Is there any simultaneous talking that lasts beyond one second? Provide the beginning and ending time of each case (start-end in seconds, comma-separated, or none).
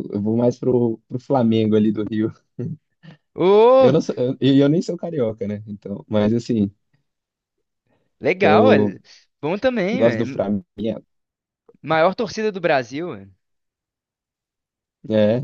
none